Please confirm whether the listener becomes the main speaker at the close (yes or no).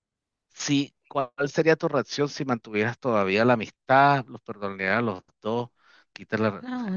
yes